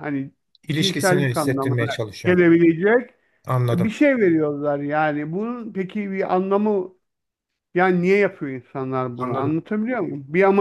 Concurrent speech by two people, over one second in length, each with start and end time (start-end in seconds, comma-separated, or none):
0.8-2.4